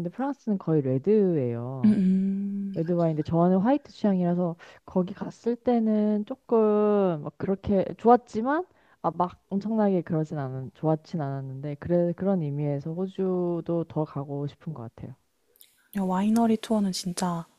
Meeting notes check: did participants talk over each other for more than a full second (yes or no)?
no